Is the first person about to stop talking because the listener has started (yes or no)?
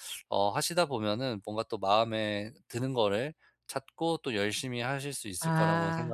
yes